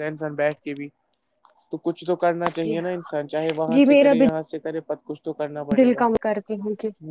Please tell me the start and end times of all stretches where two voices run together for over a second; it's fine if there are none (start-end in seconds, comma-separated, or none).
none